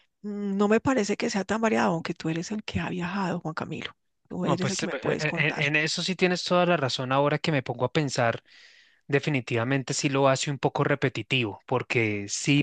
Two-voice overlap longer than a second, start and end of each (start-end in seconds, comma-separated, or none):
4.4-5.6